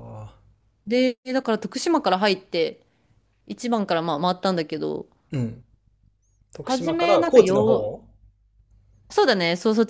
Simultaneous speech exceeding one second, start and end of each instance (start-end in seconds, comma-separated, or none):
6.6-7.9